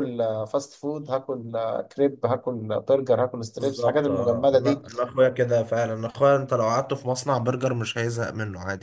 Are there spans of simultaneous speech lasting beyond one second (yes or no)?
yes